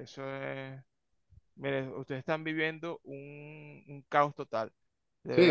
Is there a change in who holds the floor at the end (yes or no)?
yes